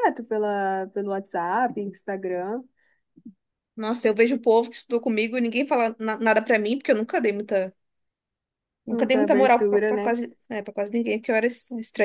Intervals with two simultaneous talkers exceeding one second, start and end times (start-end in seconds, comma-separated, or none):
8.9-10.1